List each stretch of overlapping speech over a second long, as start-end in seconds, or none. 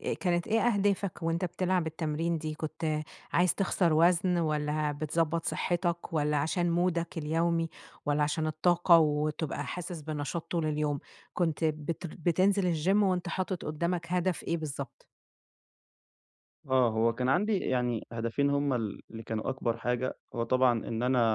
none